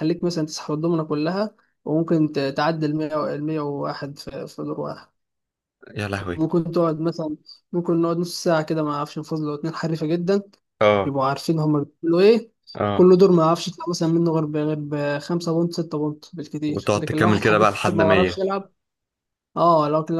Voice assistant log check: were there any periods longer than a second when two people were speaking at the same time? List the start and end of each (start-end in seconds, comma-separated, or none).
16.7-18.4